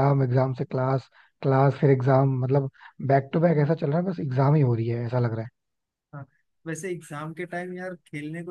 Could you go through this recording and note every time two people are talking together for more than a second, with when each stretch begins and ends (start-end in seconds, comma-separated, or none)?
none